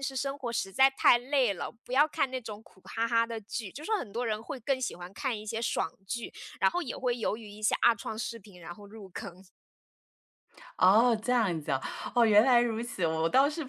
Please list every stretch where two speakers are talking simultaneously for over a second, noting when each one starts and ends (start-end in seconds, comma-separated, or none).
none